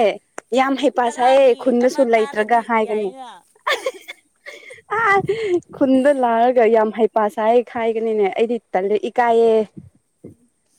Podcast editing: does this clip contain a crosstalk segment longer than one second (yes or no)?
yes